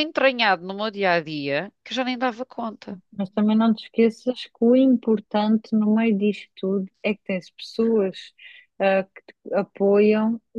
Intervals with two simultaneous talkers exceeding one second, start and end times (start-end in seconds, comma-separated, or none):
none